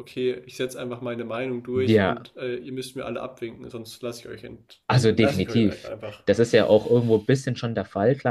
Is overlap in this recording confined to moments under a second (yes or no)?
no